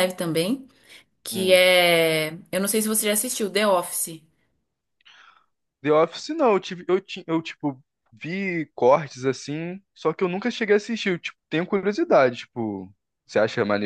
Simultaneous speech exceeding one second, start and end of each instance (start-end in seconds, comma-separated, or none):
none